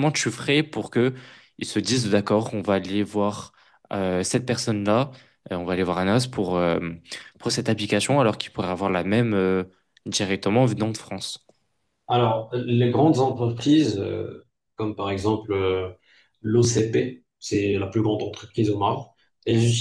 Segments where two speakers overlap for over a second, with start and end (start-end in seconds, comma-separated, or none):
none